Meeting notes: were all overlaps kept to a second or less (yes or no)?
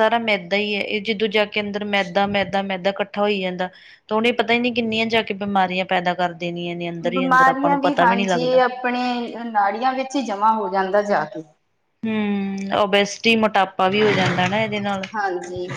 no